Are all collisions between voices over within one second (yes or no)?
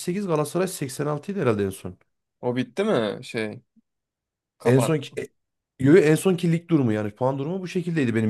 yes